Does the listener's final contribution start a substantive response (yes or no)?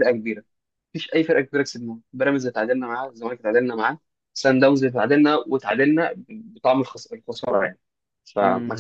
yes